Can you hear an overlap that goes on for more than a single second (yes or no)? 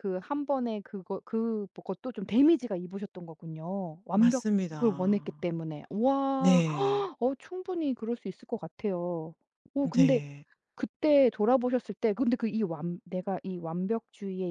yes